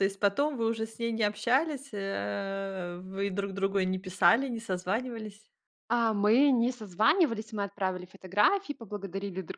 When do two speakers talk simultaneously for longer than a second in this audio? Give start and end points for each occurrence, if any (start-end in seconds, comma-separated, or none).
none